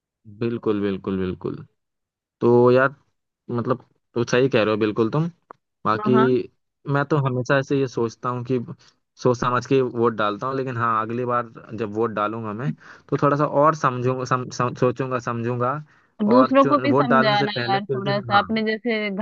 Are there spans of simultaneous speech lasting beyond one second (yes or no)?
yes